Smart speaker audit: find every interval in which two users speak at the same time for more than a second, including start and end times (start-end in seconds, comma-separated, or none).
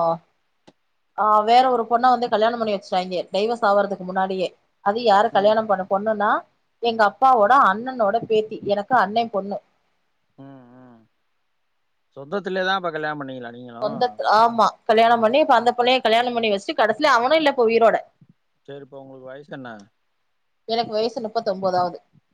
none